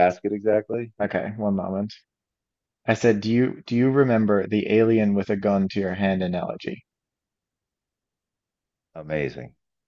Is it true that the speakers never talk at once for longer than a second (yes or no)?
yes